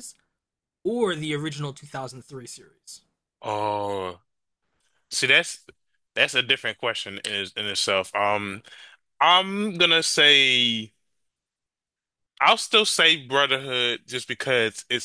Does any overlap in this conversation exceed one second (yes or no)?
no